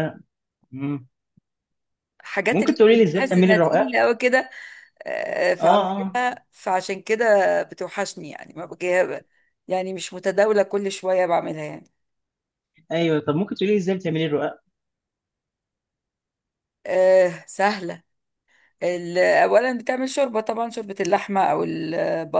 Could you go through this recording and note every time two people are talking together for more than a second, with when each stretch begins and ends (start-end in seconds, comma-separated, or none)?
2.5-3.9